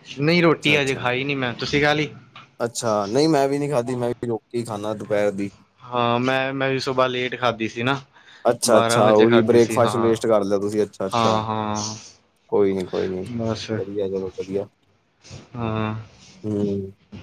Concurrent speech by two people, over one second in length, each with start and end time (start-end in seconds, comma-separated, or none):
8.7-10.1